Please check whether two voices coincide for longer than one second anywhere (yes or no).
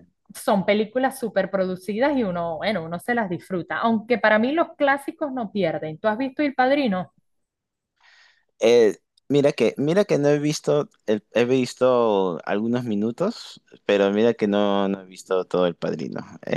no